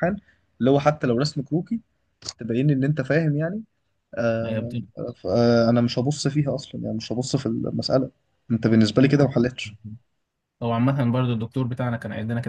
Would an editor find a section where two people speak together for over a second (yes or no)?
no